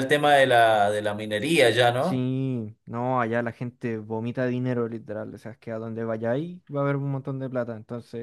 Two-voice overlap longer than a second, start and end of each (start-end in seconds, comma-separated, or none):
none